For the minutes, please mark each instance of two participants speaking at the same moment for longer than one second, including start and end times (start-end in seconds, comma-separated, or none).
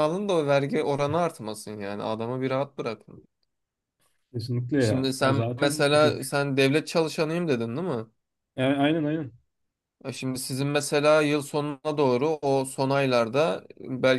4.8-6.4